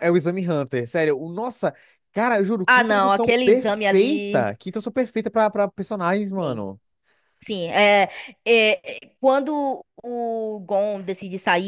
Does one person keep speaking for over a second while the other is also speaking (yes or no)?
yes